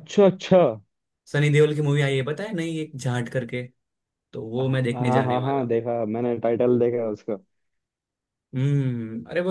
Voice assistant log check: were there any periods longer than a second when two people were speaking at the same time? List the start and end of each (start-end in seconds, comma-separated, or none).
4.6-5.8